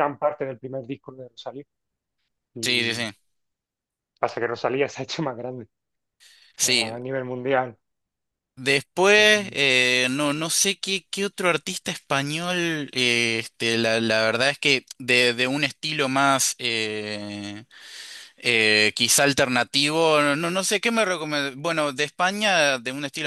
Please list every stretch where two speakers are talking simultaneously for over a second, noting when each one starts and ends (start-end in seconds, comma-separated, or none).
none